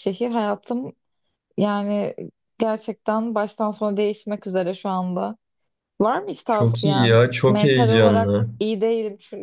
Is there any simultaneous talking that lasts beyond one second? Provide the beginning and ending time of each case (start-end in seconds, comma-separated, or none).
6.5-8.5